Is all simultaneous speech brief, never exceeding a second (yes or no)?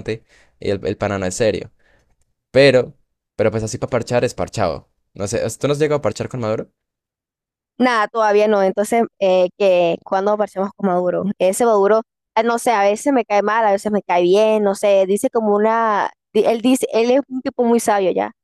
yes